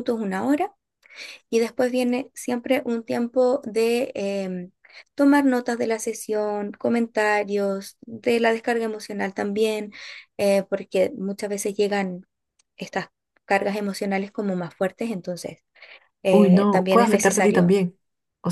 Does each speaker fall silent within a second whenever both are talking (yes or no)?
no